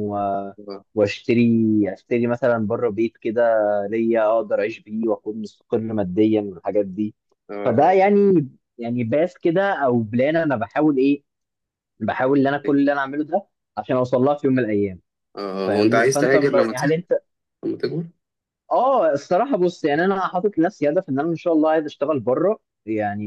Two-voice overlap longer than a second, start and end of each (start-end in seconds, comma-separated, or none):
15.7-17.0